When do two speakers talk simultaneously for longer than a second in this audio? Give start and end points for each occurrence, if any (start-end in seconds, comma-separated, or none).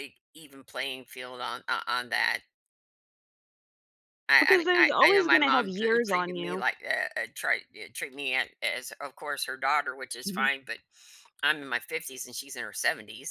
4.4-6.7